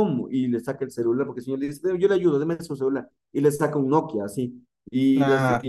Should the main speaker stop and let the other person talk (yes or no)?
no